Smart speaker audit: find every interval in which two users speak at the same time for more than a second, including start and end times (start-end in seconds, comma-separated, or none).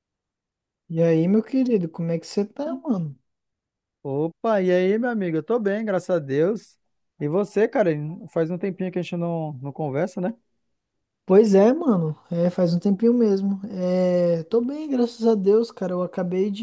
none